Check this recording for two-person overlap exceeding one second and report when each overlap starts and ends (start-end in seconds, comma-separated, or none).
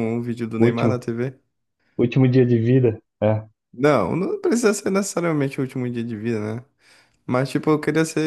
none